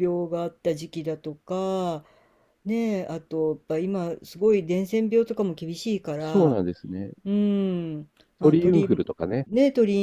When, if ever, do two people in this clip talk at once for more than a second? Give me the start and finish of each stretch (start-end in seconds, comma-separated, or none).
none